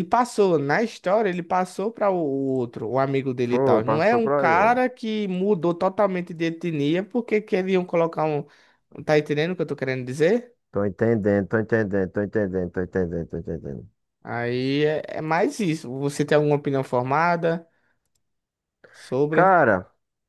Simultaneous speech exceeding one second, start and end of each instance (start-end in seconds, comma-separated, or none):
3.5-4.8